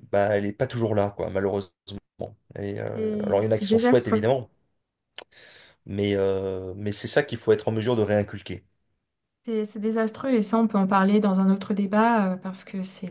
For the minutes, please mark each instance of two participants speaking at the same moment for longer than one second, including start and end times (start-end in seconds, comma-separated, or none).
2.9-4.2